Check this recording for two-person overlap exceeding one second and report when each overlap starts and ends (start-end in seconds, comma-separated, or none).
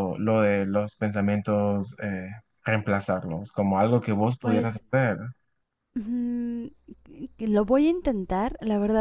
none